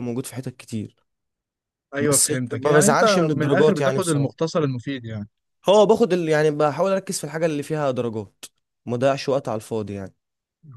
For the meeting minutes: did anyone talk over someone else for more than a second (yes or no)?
yes